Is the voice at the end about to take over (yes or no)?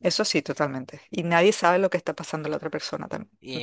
yes